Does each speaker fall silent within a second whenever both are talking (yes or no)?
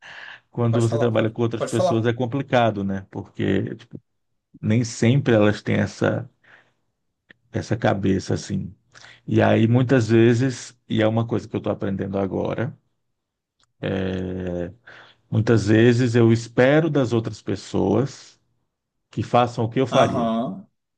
no